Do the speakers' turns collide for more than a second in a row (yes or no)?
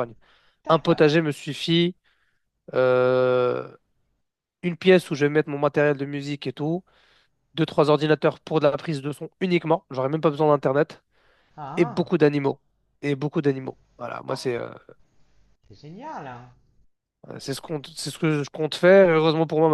no